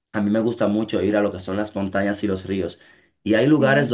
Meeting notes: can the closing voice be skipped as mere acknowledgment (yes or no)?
yes